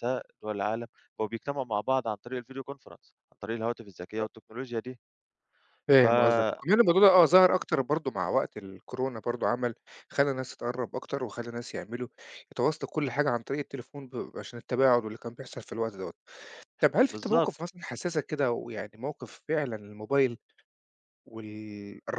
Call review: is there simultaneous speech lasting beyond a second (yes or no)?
no